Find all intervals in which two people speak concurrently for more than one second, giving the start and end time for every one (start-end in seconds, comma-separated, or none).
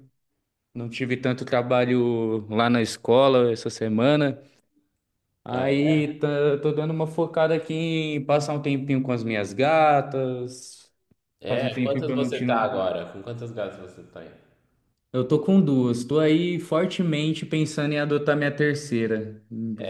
11.5-12.7